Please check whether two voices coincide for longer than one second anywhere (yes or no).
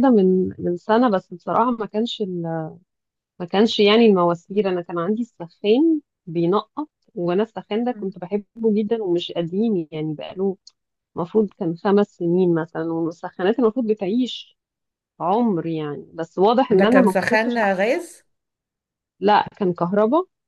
yes